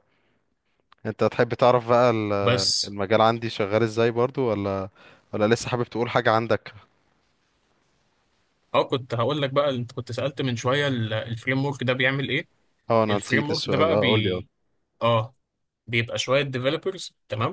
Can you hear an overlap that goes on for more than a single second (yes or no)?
yes